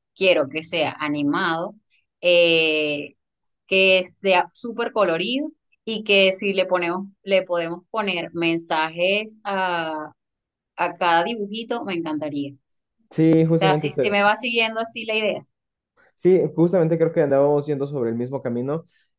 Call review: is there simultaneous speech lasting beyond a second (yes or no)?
no